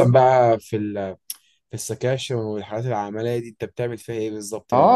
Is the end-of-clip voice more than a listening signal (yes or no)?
yes